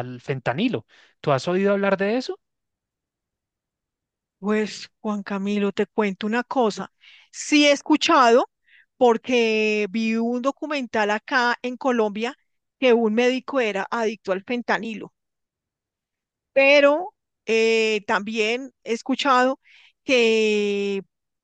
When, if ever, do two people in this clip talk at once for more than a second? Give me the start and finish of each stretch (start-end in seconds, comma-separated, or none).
none